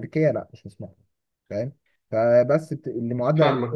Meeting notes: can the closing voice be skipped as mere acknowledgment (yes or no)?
yes